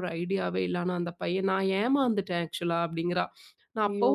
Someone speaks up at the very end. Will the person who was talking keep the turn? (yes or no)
yes